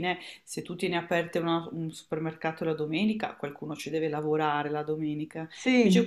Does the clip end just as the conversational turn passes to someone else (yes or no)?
no